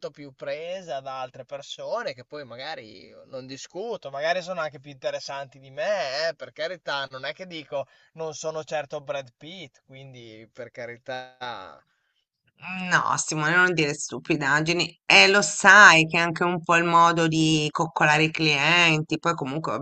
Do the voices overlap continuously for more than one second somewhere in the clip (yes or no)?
no